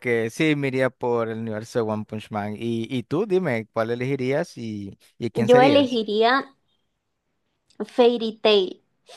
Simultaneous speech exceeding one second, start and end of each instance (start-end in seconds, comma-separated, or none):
none